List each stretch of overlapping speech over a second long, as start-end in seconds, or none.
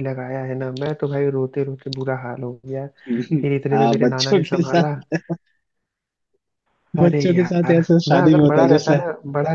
3.7-4.9, 7.0-9.0